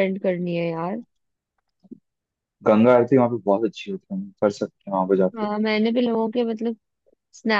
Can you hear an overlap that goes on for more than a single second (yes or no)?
no